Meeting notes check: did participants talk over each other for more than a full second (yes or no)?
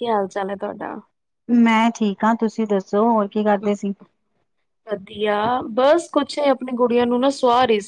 no